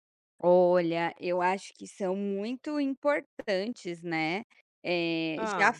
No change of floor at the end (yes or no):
yes